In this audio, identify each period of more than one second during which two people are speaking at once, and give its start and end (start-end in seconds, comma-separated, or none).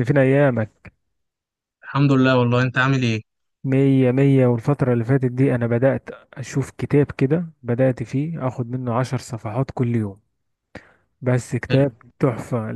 none